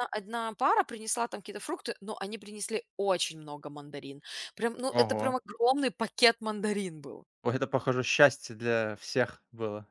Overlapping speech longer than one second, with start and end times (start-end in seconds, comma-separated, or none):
none